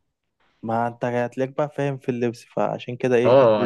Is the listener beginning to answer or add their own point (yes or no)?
yes